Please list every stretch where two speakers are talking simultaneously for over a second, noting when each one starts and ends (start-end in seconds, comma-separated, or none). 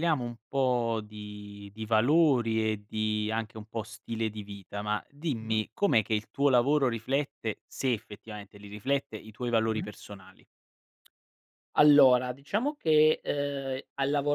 none